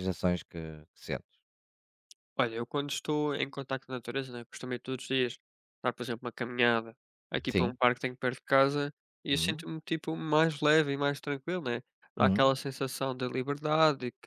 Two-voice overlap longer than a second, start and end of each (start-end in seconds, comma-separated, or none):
none